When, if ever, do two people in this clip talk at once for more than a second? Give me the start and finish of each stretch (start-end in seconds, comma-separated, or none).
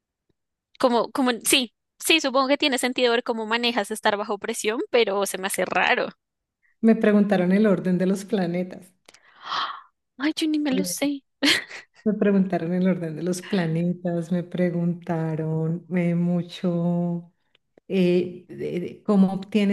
none